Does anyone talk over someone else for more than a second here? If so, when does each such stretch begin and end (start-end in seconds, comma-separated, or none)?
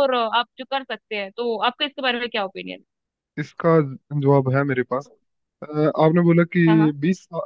none